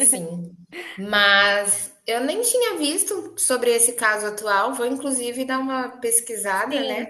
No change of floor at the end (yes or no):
no